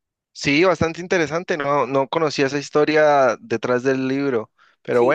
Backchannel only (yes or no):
yes